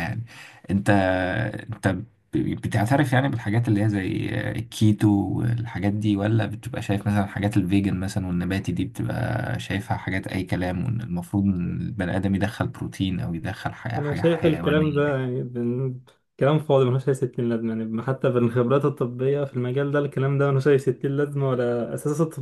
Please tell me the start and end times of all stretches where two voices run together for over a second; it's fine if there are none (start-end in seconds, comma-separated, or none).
14.0-15.2